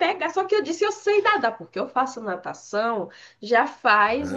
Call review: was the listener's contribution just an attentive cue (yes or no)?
no